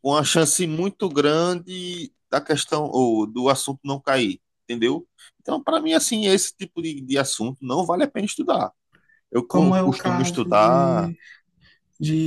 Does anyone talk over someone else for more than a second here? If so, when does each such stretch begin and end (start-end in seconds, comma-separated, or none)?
9.5-11.1